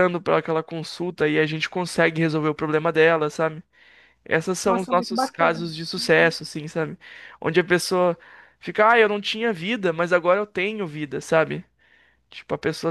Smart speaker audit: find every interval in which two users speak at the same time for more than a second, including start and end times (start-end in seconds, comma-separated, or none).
4.7-6.4